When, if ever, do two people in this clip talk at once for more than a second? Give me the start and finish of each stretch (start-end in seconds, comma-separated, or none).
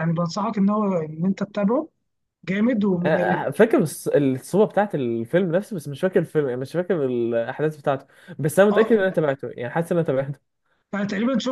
none